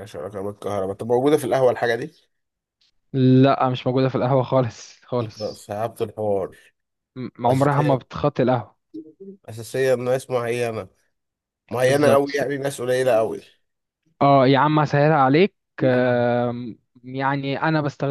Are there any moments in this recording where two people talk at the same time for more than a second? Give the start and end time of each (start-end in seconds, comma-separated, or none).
none